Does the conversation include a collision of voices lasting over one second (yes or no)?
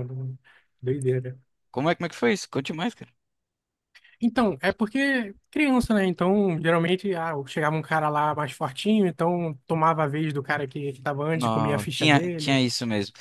yes